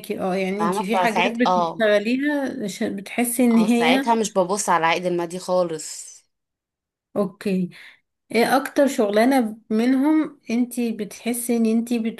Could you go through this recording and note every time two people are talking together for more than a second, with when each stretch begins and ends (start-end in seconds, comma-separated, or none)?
0.6-1.9